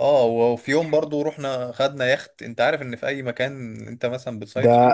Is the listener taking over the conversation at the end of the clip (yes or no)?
yes